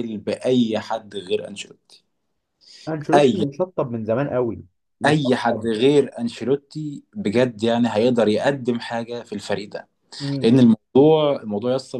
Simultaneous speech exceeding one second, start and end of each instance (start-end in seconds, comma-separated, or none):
none